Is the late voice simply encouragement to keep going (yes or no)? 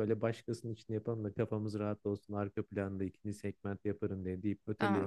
no